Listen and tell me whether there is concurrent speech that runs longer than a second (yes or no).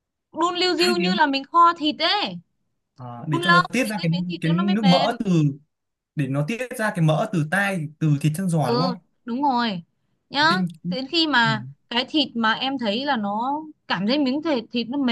yes